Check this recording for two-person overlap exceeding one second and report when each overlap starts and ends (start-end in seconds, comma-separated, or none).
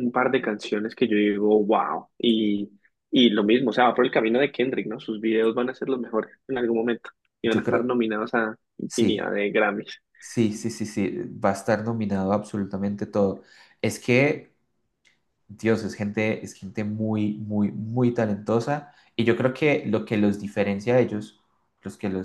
none